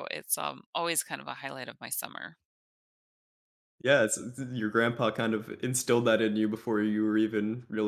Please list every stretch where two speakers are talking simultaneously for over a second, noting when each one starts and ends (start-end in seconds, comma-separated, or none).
none